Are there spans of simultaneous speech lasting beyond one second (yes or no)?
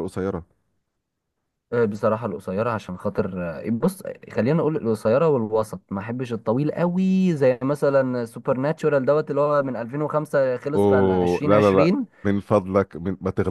yes